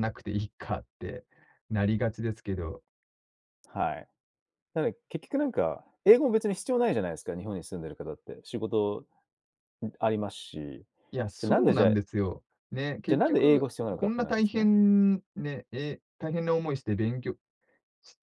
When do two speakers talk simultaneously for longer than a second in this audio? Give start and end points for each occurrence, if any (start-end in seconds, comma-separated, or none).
13.1-14.7